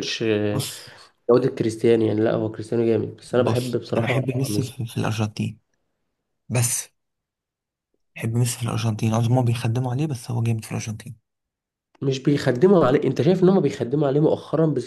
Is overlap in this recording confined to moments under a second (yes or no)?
no